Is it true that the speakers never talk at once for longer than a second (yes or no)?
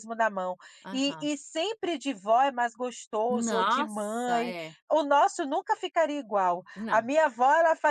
no